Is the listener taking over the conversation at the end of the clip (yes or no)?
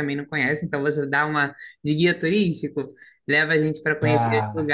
no